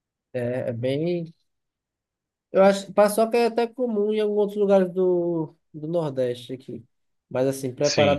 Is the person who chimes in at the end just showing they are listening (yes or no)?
yes